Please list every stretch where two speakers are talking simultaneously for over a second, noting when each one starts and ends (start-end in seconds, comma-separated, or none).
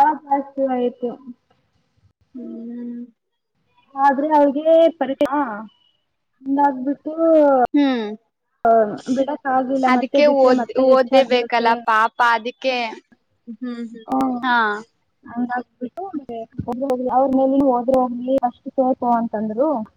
9.9-11.7